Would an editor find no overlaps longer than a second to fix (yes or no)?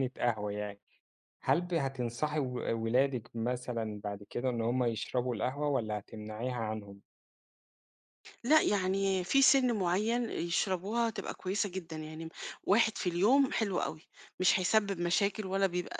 yes